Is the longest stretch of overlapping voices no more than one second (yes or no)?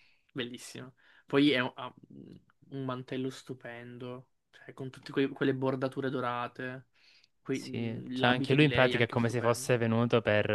no